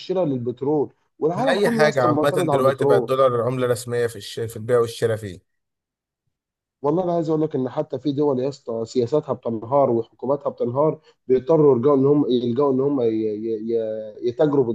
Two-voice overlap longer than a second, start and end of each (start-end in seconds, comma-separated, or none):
1.3-3.1